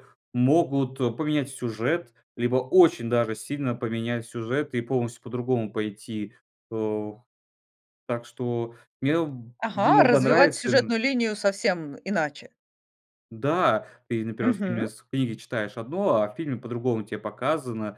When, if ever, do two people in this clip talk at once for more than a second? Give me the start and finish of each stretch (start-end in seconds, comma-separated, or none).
9.6-10.9